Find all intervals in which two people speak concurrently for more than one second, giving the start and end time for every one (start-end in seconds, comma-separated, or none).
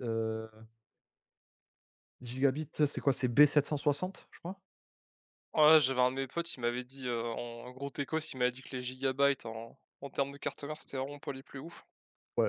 none